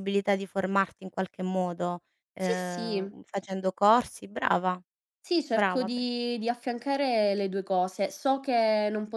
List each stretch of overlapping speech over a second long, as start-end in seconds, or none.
none